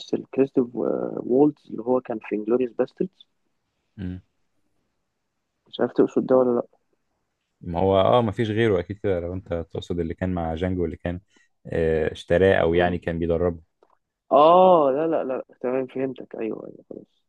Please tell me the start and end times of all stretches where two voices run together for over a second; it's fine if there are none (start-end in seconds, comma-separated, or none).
none